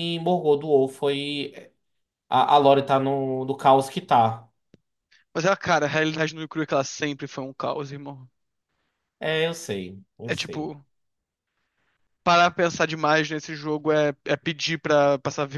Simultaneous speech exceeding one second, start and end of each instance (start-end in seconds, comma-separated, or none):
none